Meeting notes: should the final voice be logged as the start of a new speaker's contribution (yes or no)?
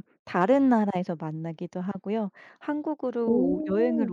no